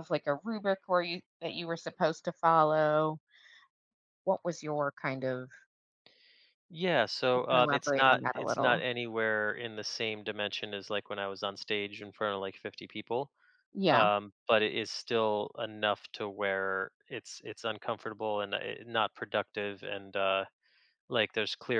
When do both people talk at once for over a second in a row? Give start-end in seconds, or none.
7.3-8.8